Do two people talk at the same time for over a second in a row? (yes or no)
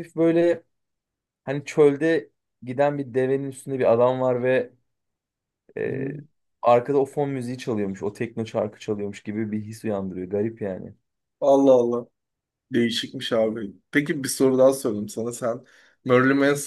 no